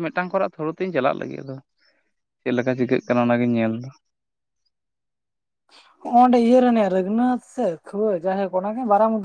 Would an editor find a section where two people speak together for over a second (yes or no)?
no